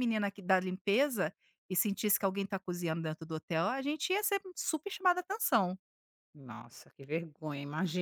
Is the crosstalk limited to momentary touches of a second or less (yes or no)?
yes